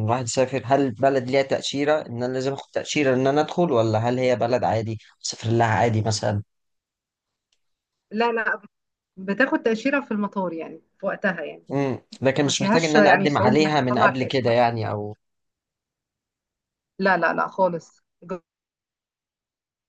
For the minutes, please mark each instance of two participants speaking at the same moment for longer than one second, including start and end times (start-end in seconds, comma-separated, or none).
12.4-14.7